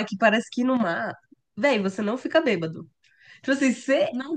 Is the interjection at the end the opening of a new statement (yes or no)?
no